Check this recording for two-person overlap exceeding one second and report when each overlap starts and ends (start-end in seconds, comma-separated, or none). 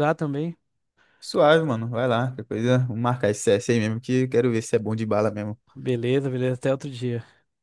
none